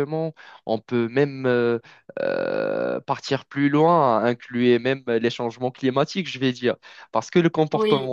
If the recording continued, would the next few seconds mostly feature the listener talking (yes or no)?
no